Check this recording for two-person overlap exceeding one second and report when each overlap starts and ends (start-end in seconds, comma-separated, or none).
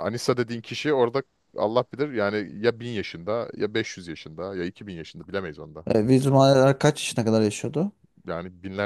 none